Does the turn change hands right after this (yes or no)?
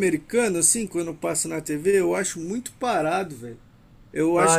yes